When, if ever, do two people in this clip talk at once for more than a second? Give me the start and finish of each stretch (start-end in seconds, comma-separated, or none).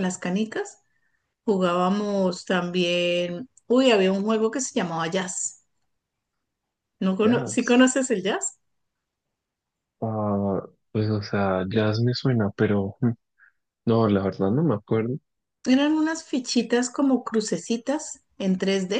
none